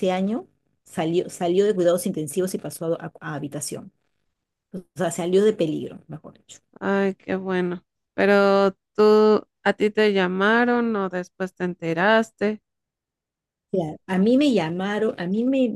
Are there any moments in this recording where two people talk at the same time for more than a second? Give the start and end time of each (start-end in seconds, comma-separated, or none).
none